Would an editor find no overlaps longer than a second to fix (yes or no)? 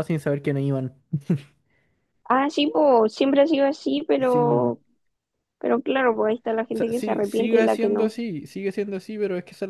no